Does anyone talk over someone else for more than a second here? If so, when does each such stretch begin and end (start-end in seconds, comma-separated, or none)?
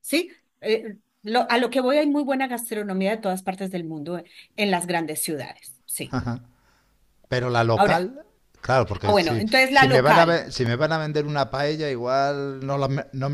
9.0-10.4